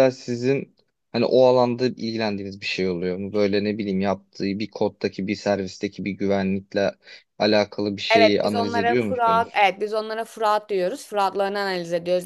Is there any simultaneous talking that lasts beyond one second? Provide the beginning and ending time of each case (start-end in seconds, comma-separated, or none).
8.1-9.6